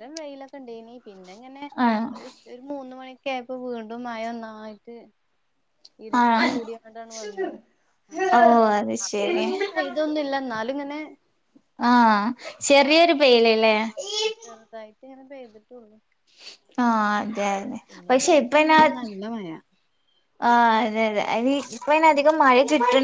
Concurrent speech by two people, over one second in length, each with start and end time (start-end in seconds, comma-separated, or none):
none